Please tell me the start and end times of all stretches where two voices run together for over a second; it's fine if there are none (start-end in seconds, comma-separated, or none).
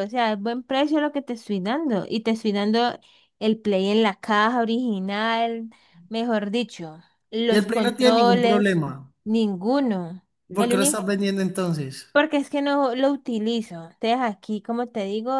7.5-8.8